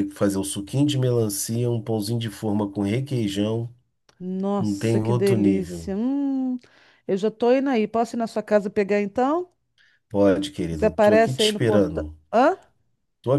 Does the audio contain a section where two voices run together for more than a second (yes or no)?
yes